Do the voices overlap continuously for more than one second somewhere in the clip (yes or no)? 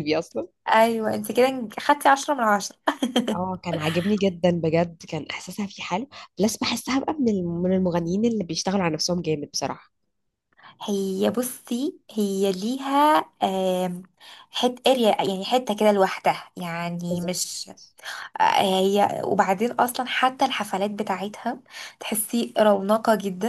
no